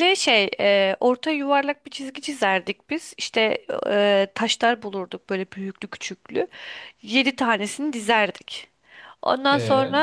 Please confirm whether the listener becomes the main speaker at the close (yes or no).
no